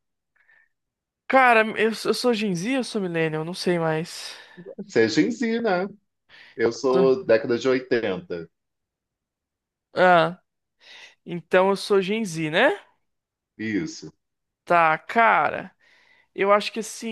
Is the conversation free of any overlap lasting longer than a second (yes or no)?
yes